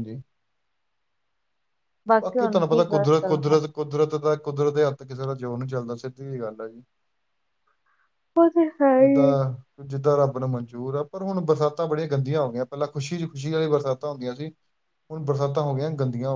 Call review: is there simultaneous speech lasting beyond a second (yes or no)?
yes